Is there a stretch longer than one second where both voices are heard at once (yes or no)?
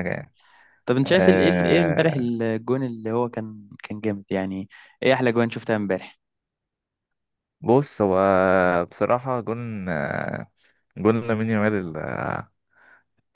yes